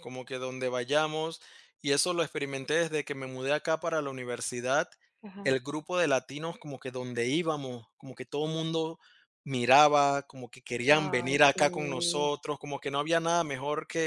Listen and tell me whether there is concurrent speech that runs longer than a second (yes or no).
yes